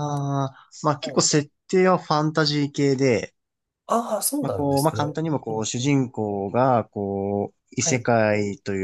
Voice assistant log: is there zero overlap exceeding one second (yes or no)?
no